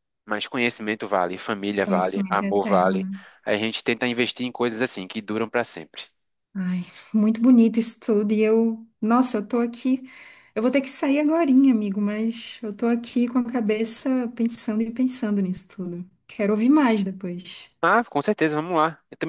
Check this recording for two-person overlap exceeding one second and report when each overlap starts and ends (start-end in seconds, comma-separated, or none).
1.8-3.1